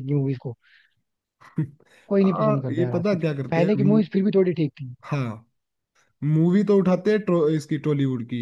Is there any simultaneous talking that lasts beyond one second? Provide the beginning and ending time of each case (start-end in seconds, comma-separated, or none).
2.1-4.0